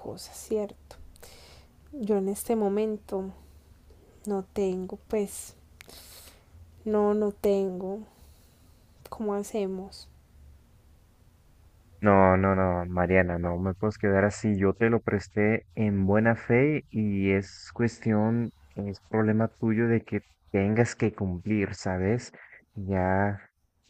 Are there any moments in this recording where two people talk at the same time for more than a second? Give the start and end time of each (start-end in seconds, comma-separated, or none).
none